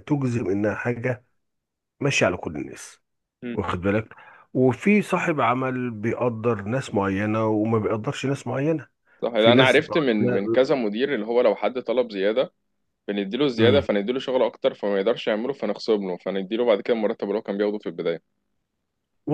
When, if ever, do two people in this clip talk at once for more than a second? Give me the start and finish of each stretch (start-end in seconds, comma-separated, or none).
9.3-10.7